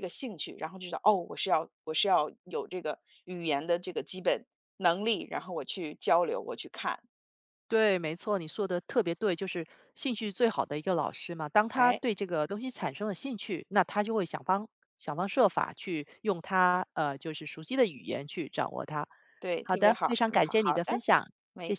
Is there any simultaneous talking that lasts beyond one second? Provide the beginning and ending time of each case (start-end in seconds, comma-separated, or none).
19.6-21.0